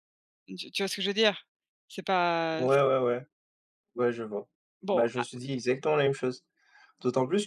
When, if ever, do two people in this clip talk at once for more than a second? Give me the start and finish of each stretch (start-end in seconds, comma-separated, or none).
none